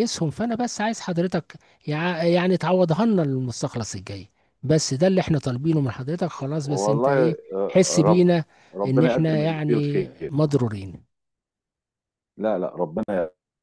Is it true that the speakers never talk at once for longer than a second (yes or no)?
no